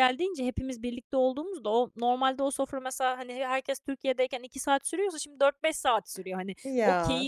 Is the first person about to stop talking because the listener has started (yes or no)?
no